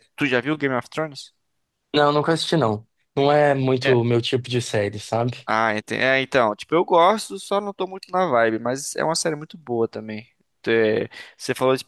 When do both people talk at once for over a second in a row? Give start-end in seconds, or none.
none